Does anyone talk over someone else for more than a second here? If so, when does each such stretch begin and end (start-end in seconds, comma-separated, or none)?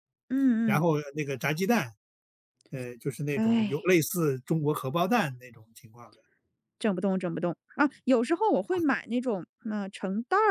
none